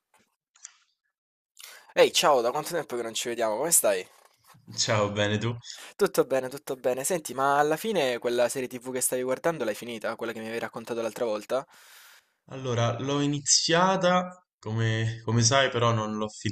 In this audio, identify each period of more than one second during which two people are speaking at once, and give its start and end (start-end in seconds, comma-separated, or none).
none